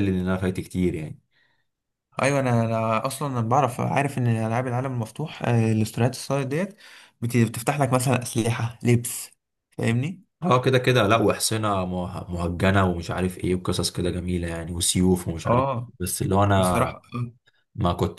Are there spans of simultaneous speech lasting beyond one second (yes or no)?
no